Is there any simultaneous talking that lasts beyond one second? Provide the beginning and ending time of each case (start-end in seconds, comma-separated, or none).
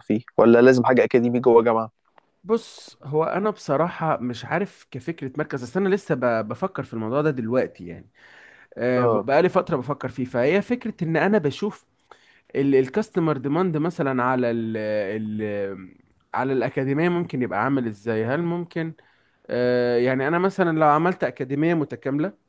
none